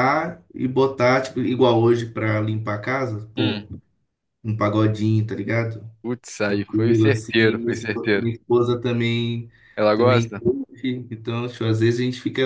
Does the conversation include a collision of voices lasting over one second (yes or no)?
yes